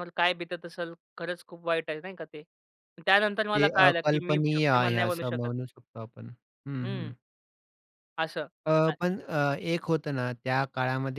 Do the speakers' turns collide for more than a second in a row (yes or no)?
yes